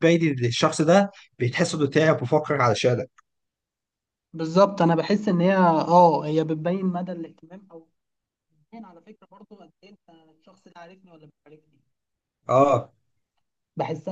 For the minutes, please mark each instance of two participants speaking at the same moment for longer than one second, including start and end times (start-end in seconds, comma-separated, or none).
none